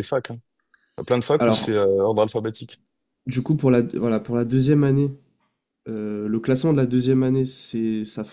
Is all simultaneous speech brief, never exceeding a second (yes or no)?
yes